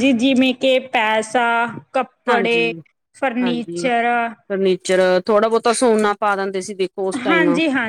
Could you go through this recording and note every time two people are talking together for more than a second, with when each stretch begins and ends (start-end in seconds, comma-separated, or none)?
none